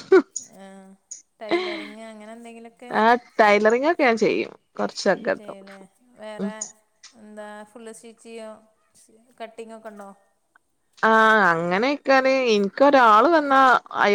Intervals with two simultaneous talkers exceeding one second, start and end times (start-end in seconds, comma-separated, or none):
none